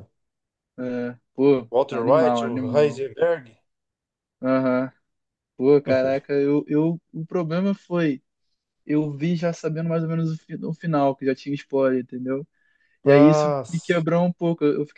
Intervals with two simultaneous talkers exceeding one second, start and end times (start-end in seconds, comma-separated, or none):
1.7-3.1